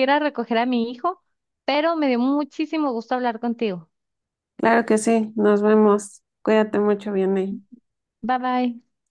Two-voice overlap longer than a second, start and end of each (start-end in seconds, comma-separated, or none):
none